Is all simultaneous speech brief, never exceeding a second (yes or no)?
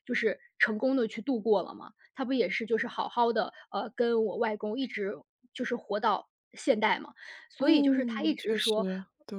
no